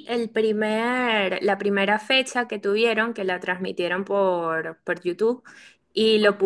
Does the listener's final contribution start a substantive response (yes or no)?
no